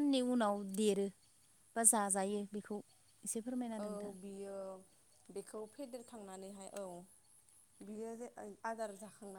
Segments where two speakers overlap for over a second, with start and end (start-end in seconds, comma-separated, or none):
none